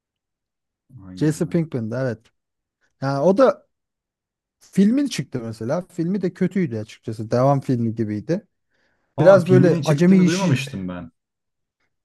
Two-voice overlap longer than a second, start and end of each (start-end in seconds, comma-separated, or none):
9.2-10.6